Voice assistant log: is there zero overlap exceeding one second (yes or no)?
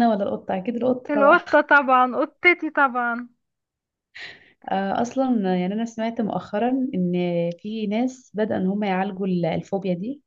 yes